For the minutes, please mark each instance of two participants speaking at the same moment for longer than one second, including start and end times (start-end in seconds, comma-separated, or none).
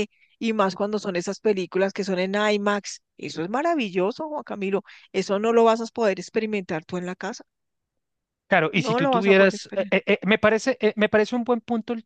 8.7-9.9